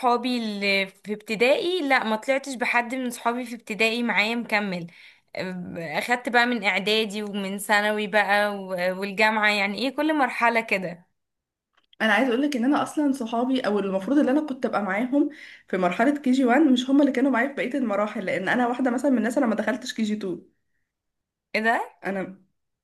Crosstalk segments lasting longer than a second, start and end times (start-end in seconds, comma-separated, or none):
none